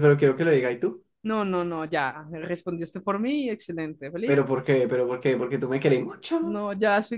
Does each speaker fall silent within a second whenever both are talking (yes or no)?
yes